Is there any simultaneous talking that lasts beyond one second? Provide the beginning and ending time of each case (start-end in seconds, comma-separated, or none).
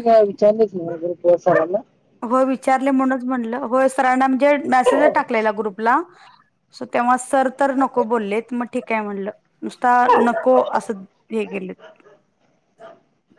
none